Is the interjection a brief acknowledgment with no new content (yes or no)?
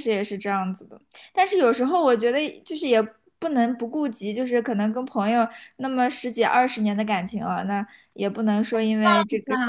no